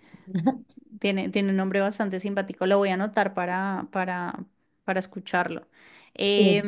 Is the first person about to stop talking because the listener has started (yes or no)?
no